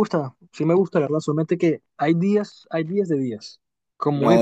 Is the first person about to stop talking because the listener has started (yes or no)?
no